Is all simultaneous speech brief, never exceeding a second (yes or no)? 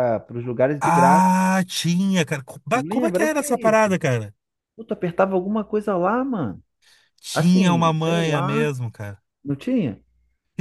no